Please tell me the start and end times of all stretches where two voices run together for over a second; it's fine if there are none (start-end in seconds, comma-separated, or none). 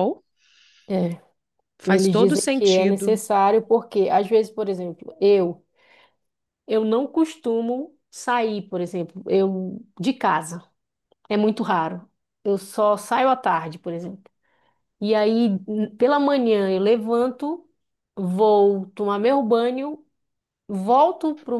1.9-3.2